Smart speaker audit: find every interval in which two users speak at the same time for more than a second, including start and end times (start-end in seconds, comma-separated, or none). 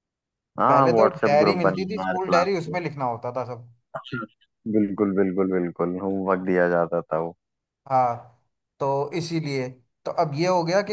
0.7-2.6